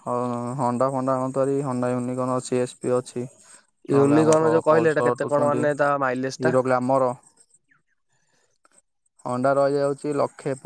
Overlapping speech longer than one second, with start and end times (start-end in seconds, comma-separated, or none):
4.0-5.7